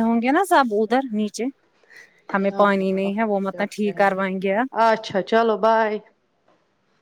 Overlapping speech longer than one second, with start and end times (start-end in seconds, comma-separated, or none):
2.3-4.0